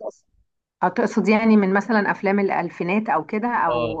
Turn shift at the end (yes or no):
yes